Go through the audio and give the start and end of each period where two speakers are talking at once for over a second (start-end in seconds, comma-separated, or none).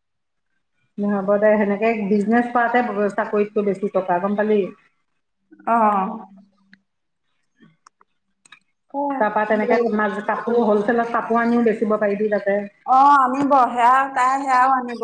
none